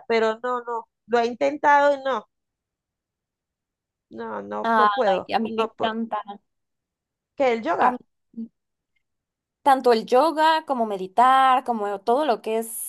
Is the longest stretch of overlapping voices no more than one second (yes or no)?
no